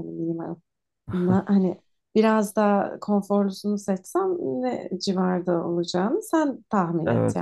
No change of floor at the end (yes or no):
no